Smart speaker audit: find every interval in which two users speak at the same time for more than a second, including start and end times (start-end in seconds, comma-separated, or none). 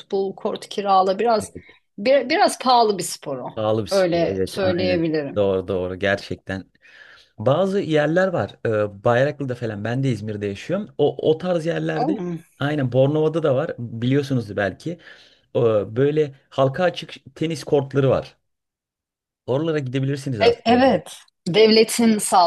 3.9-5.5